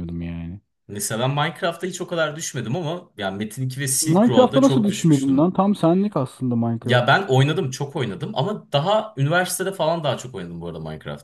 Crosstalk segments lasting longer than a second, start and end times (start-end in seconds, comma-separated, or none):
4.0-5.5